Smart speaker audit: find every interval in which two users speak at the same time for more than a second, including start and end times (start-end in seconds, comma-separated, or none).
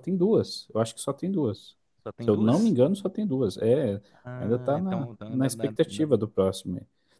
4.3-6.1